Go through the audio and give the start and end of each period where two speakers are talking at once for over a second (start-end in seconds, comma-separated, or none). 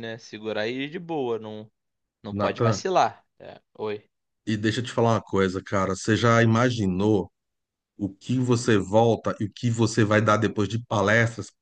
none